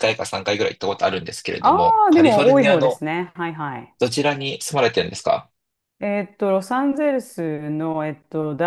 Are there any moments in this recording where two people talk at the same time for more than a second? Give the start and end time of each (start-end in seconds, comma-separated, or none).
1.6-3.0